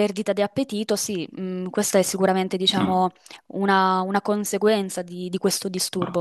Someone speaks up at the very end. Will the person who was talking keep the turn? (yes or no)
no